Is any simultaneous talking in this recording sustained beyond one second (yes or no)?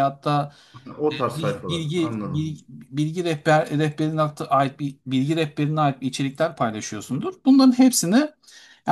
yes